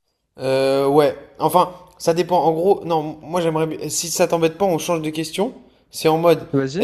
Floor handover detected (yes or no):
no